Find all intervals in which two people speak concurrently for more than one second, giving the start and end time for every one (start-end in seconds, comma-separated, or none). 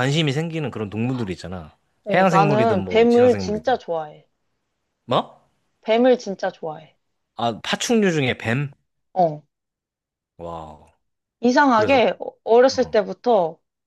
2.1-3.8